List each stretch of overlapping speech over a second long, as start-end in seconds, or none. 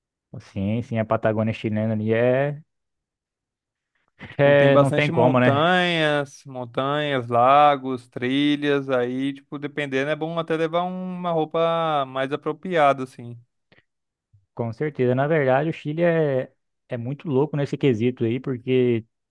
4.4-5.7